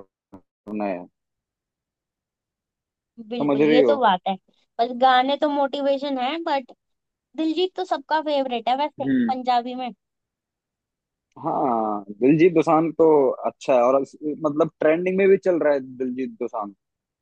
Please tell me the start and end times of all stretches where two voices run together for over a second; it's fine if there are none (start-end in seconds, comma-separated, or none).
none